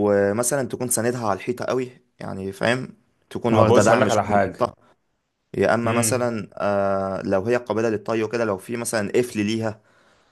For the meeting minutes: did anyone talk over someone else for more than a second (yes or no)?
yes